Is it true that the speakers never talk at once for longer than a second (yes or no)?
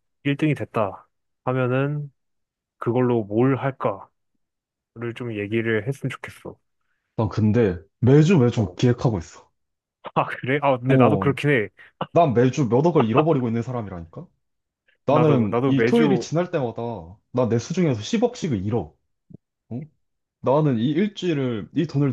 no